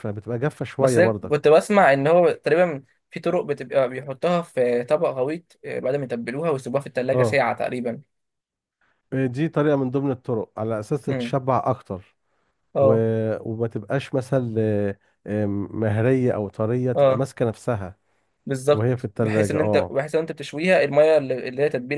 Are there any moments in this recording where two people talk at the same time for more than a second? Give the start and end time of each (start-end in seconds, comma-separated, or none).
18.7-20.0